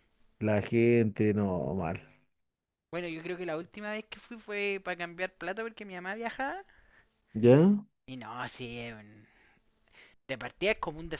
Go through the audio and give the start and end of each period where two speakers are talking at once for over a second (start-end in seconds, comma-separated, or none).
none